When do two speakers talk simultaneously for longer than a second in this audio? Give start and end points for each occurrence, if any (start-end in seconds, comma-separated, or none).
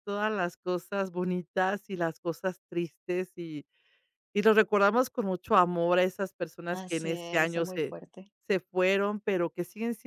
6.7-8.0